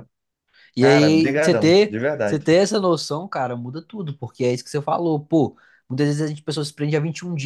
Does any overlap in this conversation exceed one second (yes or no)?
yes